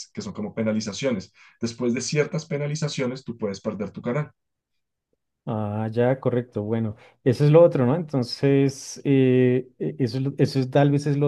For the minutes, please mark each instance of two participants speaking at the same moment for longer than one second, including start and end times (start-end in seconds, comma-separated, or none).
none